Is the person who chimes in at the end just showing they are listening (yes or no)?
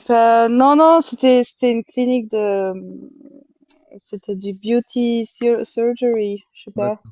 yes